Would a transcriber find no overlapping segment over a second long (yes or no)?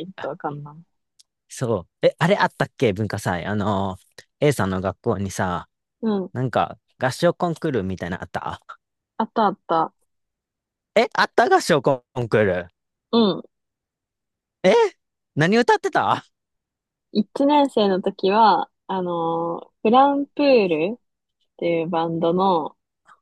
yes